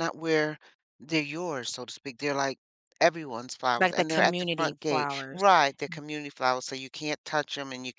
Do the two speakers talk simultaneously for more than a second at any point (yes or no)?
yes